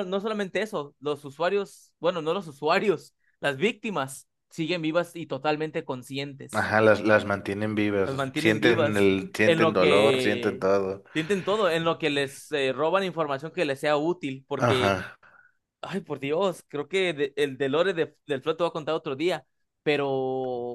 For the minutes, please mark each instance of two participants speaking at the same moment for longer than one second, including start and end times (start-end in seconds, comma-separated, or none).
8.0-10.7